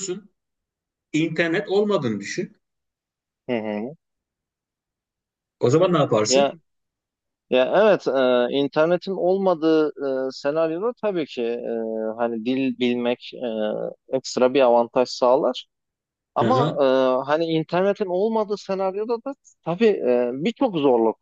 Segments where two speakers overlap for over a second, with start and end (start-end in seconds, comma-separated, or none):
none